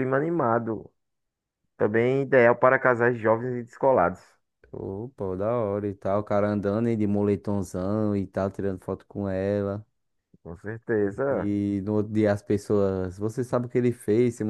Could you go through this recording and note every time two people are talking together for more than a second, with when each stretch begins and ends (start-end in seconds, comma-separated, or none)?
none